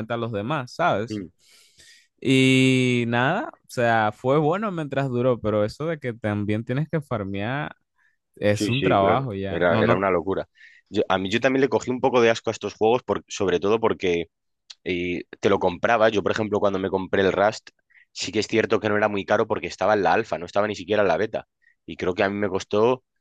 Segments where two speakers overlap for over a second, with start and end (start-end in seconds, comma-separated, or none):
8.5-10.0